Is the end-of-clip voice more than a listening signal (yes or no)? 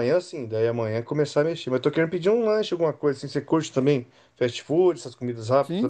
yes